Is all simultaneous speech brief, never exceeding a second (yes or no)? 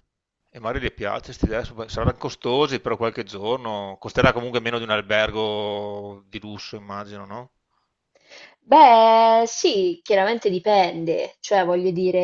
yes